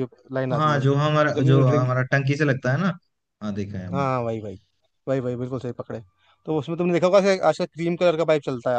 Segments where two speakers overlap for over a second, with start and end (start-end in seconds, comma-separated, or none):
0.5-1.9